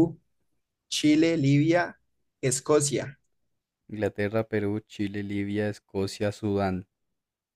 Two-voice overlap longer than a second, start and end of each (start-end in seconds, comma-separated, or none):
none